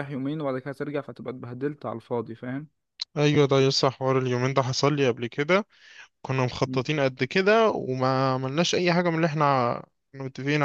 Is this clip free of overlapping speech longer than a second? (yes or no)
yes